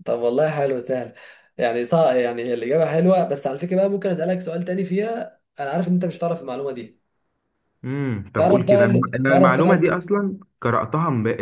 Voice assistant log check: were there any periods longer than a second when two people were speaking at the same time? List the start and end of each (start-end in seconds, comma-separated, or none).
8.4-9.9